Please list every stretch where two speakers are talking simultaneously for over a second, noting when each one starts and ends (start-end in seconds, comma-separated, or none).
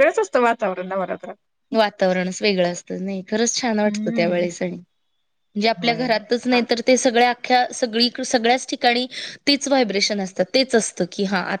none